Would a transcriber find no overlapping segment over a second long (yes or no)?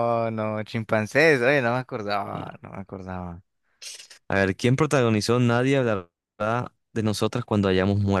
yes